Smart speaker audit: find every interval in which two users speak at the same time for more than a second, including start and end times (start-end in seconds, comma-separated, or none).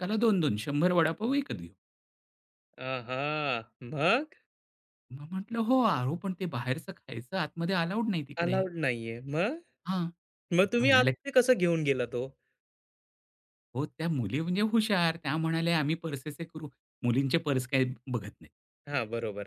none